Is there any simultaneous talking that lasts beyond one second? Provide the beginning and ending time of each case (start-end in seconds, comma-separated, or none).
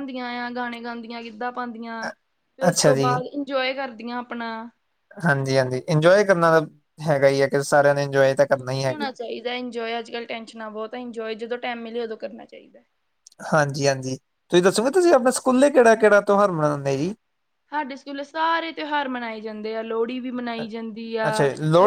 none